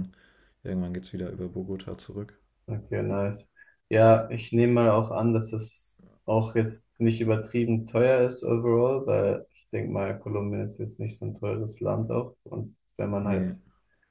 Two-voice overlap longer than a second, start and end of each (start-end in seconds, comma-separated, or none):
none